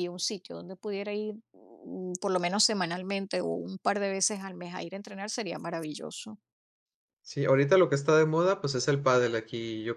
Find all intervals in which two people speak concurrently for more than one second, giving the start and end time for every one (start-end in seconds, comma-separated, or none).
none